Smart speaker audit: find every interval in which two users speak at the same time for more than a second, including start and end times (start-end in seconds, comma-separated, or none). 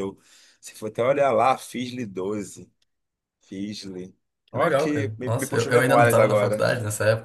4.5-6.6